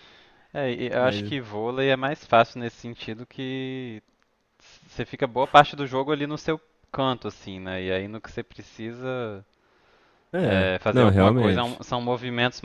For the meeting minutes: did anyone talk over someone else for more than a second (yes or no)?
yes